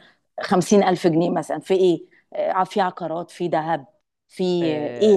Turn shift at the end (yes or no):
yes